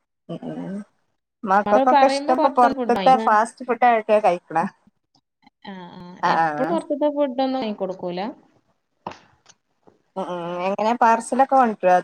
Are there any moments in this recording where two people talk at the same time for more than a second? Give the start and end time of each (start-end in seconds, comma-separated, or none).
1.7-3.1